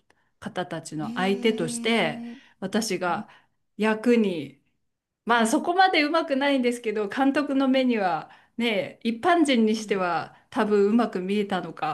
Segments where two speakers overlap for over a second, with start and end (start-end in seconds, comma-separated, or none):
1.0-2.2